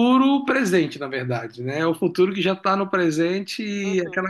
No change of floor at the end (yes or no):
yes